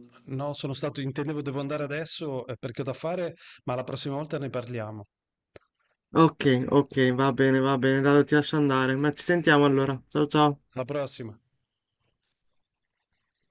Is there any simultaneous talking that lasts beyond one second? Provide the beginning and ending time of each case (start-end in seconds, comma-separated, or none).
none